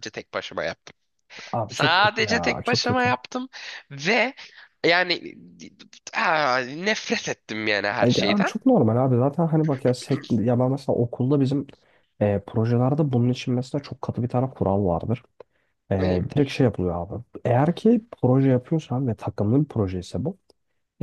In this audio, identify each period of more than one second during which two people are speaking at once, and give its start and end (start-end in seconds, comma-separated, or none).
1.7-3.1